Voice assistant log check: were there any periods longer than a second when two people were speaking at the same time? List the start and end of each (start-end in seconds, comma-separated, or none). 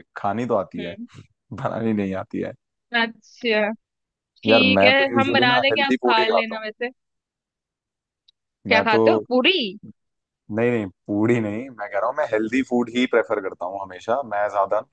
4.5-6.6